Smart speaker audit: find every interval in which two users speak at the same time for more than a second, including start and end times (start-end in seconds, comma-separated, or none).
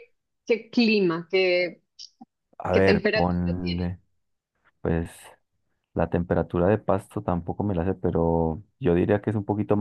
2.7-3.9